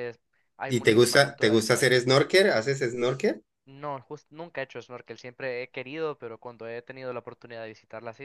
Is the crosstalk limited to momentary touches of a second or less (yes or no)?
no